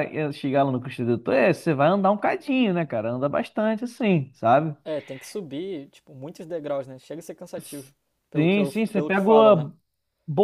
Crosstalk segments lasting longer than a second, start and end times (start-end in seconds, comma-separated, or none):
8.4-9.7